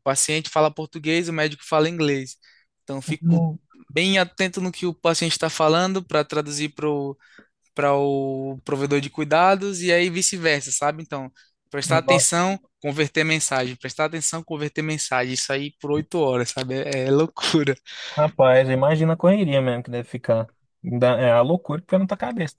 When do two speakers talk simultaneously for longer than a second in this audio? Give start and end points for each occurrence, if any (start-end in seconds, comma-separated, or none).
none